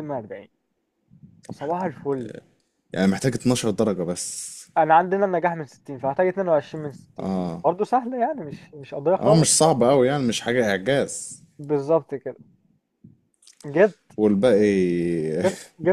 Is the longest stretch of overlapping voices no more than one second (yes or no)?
yes